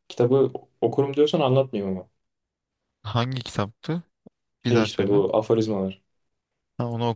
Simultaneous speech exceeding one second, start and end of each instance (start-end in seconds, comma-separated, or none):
none